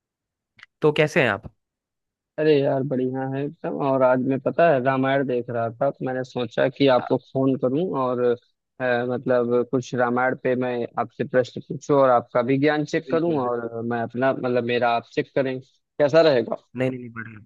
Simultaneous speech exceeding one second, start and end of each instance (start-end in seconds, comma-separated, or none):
none